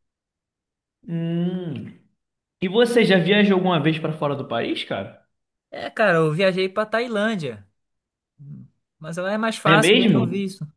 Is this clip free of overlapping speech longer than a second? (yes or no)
yes